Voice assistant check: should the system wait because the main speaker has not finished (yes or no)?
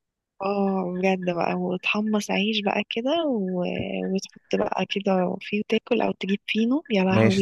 no